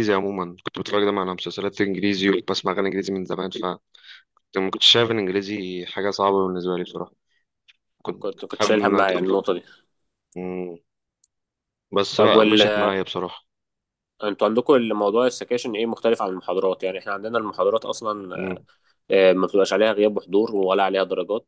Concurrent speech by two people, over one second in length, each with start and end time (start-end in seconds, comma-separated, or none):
8.2-9.4